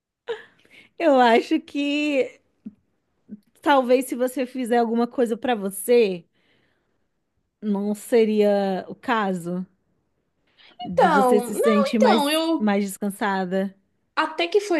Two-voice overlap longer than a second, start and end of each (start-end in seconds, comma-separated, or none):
10.9-12.7